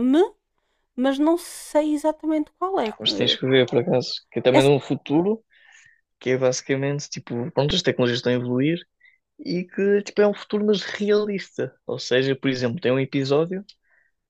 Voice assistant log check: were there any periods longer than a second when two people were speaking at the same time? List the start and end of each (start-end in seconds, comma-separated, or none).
none